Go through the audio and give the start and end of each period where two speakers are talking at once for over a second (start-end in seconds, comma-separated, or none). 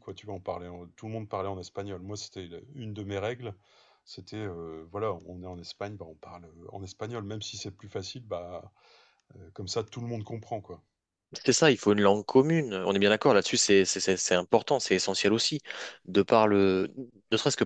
none